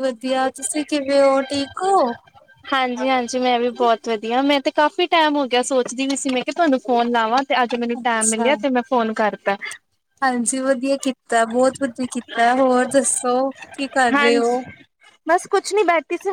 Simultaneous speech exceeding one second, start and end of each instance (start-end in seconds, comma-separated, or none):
none